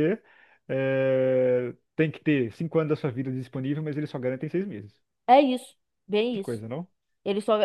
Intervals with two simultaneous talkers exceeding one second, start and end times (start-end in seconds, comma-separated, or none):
none